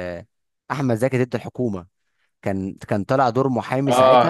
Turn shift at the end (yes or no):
yes